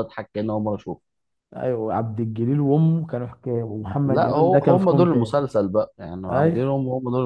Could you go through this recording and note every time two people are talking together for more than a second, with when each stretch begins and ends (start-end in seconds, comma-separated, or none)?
4.1-5.4